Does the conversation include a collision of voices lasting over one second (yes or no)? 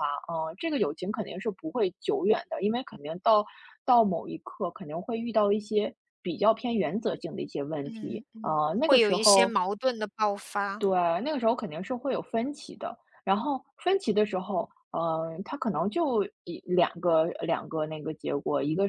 yes